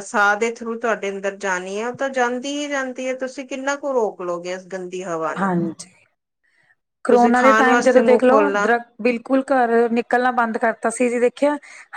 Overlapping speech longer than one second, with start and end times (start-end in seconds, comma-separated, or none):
7.1-8.7